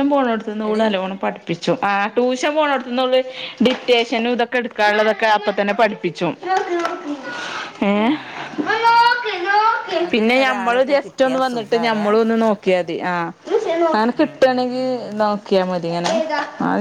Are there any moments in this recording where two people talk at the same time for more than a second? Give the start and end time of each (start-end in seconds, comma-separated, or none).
10.1-12.1